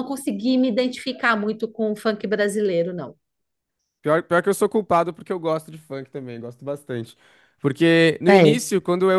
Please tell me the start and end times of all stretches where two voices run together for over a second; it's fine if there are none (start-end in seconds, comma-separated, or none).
none